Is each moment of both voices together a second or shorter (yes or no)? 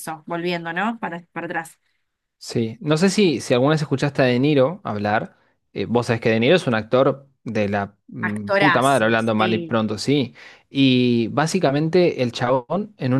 no